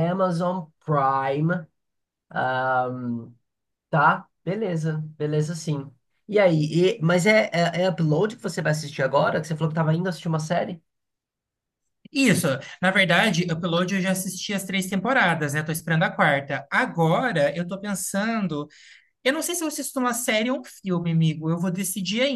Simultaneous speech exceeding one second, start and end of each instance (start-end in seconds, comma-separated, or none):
none